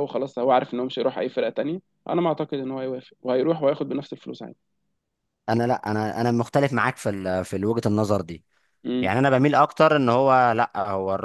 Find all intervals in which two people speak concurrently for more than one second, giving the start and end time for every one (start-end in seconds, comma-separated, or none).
none